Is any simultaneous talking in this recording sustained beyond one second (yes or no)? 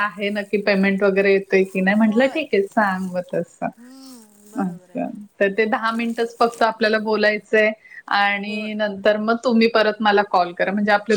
no